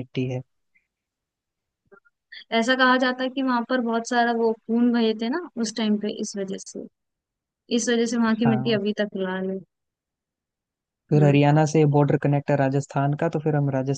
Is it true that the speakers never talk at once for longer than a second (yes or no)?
yes